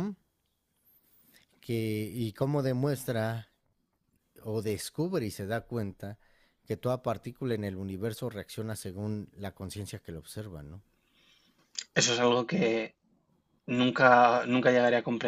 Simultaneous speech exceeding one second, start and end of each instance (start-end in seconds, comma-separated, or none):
none